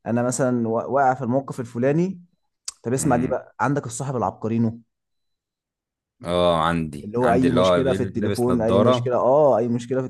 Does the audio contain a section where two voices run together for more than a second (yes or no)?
yes